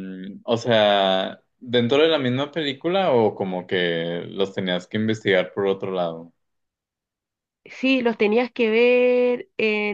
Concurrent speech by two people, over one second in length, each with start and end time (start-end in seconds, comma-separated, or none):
none